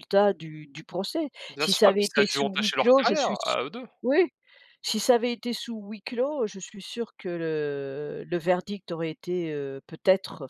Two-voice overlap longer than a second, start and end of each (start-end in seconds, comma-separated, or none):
1.5-3.5